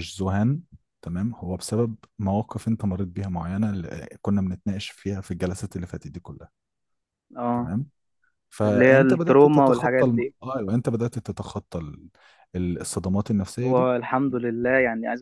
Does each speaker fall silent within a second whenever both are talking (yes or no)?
no